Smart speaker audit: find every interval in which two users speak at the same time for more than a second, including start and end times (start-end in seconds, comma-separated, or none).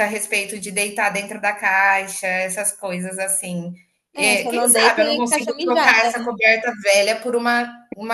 4.2-6.0